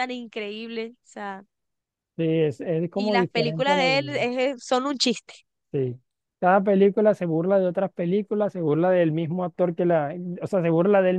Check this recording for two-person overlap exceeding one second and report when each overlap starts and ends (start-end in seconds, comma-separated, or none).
3.0-4.2